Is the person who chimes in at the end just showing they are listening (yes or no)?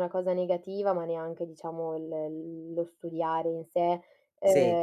yes